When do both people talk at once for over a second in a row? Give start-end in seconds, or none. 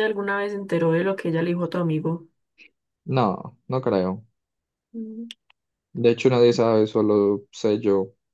none